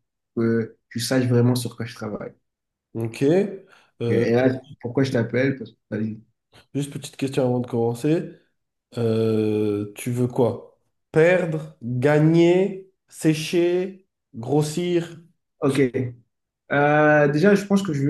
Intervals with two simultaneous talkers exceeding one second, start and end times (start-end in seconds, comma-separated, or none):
none